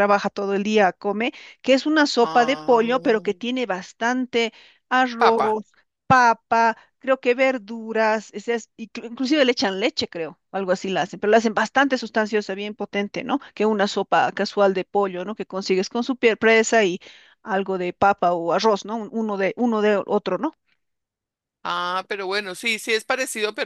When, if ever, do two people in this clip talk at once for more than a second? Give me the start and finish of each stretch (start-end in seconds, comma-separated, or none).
none